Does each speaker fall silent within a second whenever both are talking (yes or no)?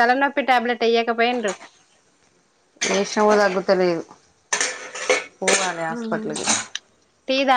yes